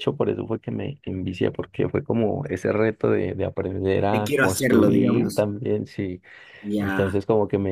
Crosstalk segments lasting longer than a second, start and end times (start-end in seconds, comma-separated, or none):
4.0-5.4